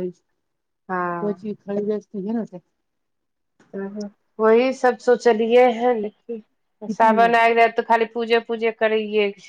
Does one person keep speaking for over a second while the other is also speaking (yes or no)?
no